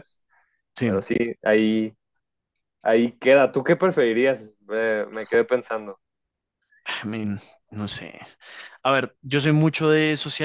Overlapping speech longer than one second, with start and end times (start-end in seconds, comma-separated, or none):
none